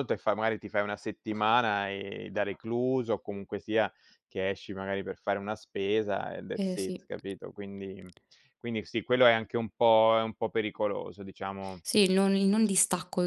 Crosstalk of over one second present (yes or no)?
no